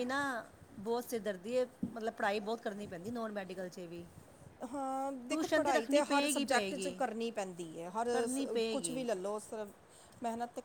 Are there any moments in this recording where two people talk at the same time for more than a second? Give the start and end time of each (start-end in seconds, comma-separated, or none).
5.3-7.0